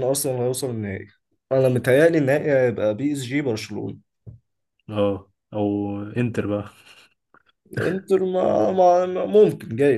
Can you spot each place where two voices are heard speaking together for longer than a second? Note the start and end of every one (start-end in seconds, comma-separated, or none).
none